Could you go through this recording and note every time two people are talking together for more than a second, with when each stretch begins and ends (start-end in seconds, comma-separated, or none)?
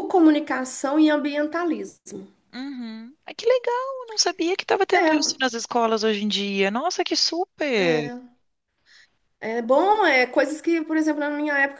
none